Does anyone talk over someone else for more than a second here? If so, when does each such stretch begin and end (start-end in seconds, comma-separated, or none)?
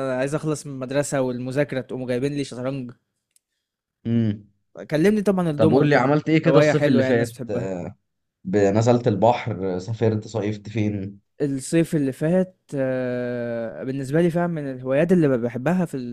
5.6-7.3